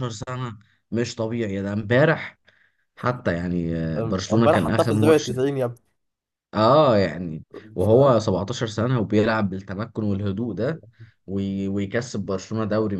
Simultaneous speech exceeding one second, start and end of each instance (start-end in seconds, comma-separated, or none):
4.0-5.3